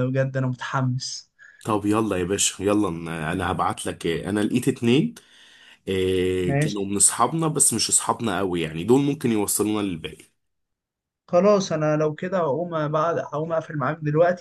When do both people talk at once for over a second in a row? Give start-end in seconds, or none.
none